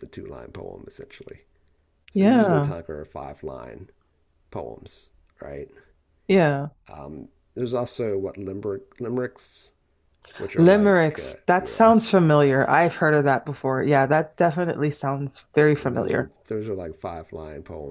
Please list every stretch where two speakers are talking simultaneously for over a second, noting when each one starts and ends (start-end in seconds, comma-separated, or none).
10.6-11.9